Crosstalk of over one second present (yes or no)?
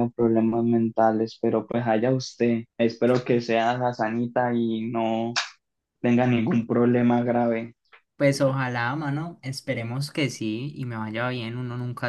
no